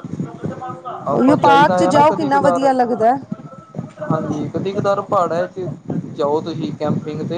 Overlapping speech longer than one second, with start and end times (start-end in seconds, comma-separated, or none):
1.1-2.7